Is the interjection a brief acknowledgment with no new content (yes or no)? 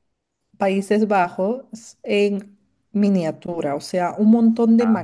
yes